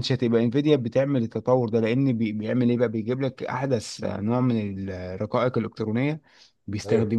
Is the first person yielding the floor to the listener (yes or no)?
no